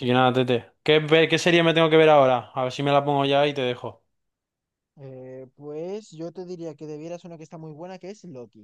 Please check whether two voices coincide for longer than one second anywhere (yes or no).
no